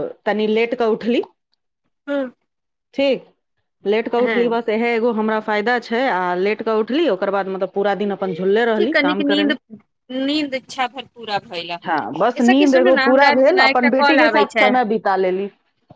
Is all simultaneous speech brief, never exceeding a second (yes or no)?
no